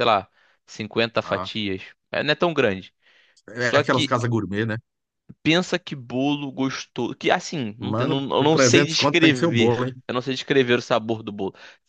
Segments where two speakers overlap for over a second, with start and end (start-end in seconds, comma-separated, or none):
7.8-9.9